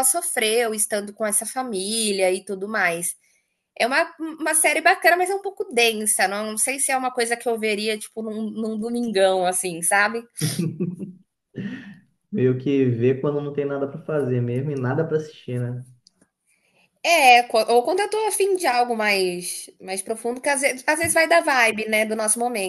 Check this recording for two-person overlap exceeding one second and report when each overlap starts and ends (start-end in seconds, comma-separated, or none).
none